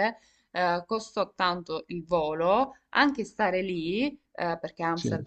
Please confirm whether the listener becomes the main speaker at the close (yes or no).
no